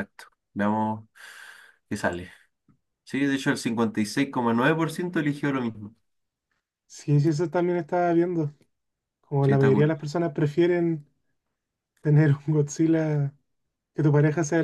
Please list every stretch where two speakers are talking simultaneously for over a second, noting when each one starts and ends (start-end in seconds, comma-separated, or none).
none